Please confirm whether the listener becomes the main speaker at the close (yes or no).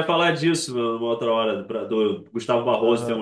no